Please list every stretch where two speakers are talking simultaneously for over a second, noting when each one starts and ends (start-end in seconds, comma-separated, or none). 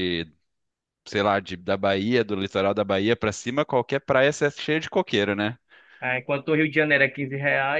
none